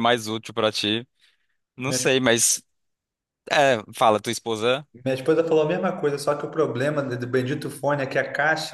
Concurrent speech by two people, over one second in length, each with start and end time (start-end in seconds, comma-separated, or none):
none